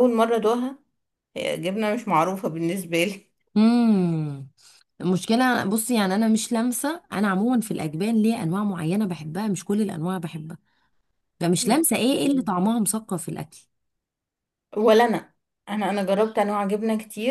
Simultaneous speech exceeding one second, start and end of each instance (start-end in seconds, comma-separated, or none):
none